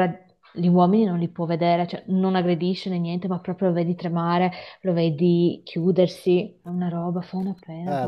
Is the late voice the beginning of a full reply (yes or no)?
yes